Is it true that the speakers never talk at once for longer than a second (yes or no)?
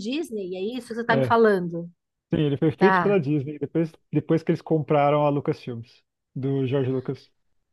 yes